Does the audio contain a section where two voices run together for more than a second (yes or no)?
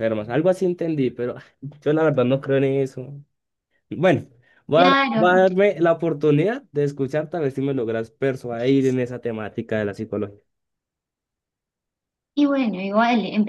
no